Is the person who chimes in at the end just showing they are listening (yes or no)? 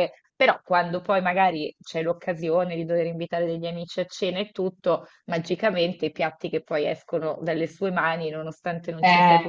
yes